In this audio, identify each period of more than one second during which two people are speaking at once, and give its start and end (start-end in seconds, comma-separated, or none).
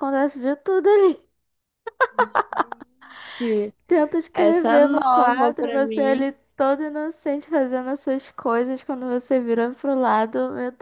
4.3-6.3